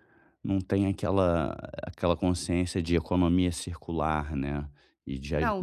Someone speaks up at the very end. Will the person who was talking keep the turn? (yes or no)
no